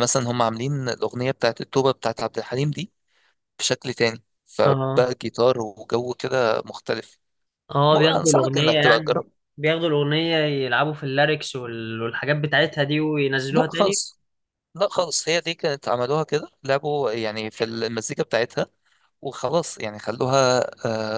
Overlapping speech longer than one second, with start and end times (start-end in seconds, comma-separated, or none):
7.9-9.3